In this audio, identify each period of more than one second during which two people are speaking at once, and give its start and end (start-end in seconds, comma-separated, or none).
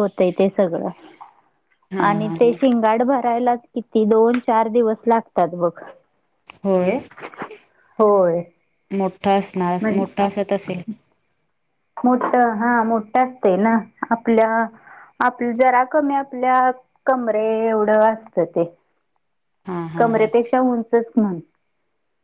none